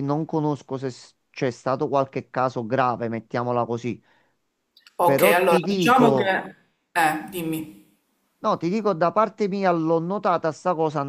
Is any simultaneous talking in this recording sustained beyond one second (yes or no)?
yes